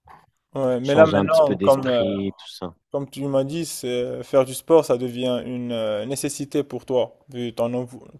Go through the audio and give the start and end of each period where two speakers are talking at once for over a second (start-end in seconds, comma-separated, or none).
0.8-2.0